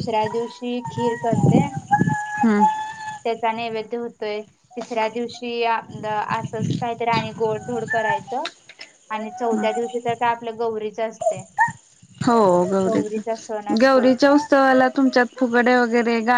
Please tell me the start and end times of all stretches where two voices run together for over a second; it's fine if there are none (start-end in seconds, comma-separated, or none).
none